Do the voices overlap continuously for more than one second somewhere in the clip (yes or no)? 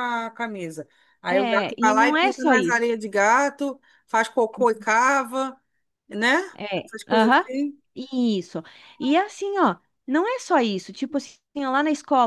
yes